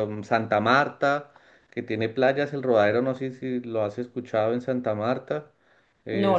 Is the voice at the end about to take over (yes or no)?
no